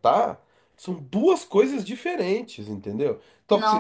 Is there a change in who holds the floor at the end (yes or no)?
no